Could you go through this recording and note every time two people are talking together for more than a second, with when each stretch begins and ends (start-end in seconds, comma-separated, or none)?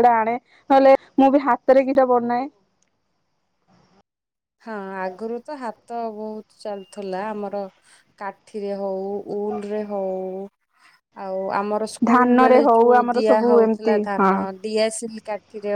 12.1-14.3